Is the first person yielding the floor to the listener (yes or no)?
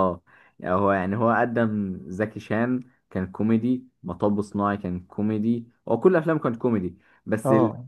yes